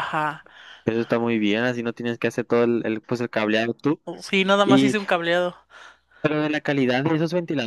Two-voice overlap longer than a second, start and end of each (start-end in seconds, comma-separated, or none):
none